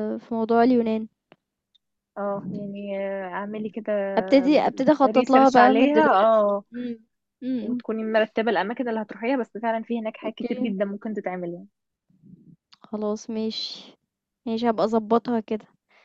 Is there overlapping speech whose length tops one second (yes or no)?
yes